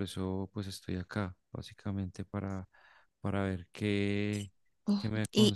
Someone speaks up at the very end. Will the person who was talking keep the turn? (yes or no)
yes